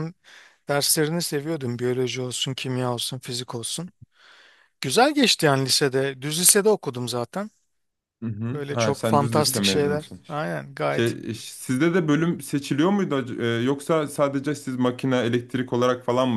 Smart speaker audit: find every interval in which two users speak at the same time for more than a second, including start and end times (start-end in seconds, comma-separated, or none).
8.5-10.2